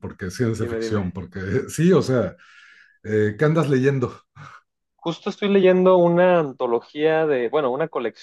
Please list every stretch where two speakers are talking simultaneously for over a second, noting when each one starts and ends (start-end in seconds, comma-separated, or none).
none